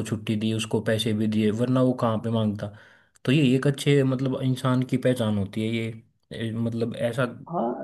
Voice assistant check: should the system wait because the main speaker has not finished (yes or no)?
no